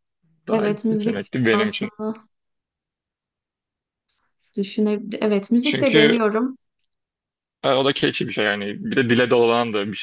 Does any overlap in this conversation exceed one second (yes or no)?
yes